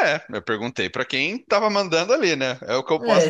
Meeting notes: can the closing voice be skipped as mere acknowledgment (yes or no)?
no